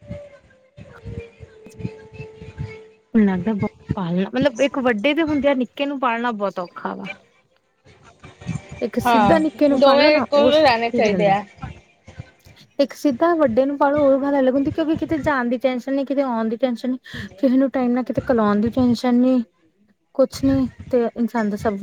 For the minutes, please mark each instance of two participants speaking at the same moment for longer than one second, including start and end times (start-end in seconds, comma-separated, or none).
9.1-11.3